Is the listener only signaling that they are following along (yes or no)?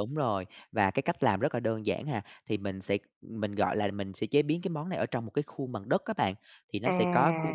yes